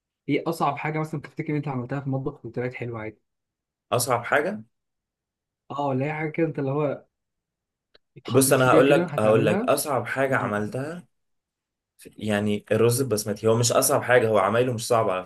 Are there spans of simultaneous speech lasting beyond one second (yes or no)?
yes